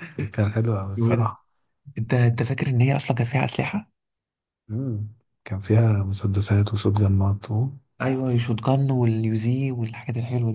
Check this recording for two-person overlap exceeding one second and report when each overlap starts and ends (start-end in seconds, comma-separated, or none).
none